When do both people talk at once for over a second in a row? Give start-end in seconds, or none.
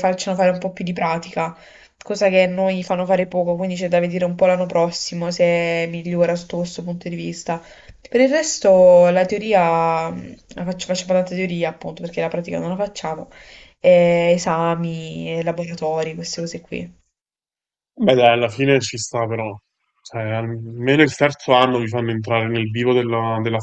none